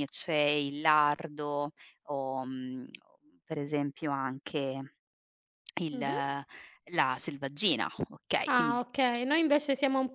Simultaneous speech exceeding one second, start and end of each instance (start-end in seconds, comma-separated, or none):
none